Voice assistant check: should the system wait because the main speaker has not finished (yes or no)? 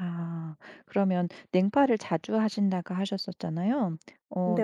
yes